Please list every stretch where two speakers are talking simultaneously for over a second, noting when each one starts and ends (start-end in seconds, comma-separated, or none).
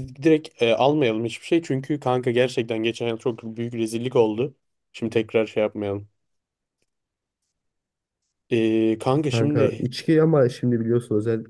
none